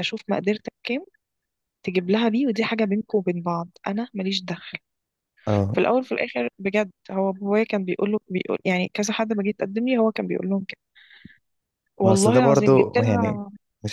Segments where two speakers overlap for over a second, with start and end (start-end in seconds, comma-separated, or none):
12.0-13.4